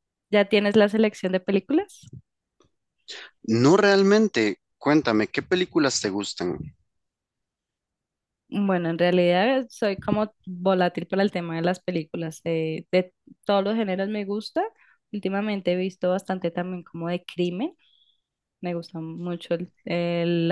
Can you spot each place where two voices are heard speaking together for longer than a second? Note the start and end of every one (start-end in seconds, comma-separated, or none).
none